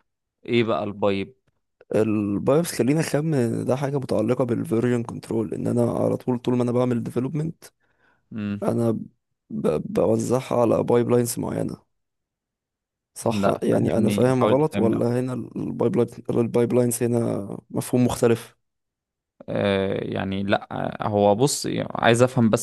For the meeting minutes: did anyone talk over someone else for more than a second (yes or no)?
yes